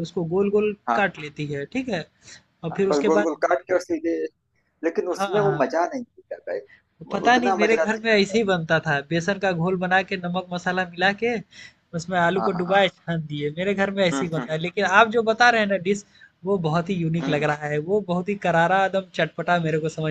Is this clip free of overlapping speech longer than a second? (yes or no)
no